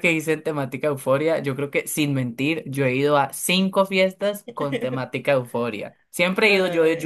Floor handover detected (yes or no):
no